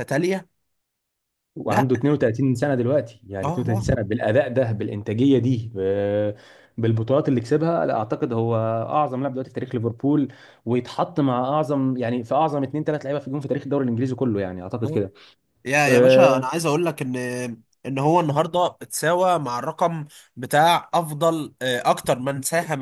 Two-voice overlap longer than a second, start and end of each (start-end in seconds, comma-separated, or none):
none